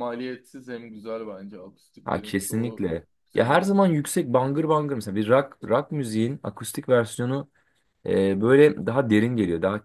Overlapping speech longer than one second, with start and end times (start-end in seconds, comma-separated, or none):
2.0-3.8